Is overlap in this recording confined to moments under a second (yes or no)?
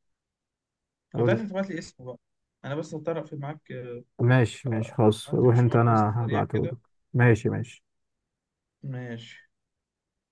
no